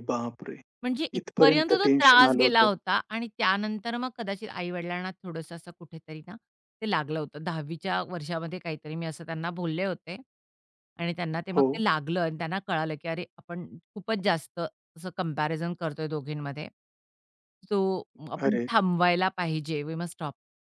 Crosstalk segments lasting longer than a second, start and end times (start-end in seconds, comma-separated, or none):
1.2-2.7